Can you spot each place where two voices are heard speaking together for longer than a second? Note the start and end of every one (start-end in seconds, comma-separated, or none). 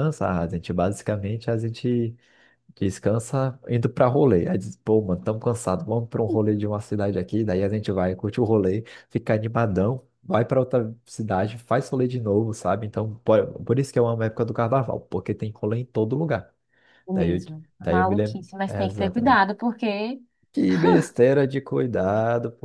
17.1-19.4